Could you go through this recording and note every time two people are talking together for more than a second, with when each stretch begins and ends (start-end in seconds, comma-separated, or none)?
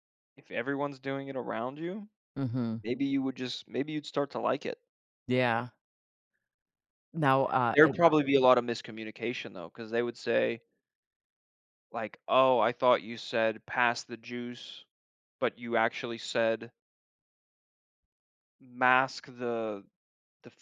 none